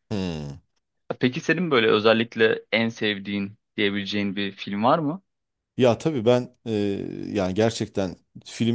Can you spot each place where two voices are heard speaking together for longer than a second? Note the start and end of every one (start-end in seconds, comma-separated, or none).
none